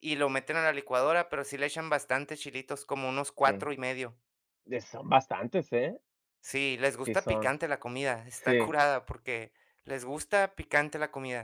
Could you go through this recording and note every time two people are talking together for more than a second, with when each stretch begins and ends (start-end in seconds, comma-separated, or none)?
none